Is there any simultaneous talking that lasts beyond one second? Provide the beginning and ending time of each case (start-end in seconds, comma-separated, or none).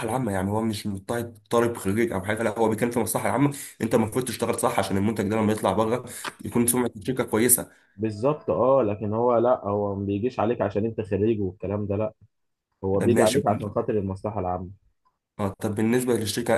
none